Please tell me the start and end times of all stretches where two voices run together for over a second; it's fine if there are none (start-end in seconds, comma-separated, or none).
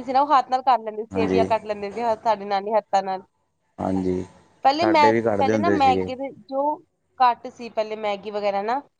4.8-6.1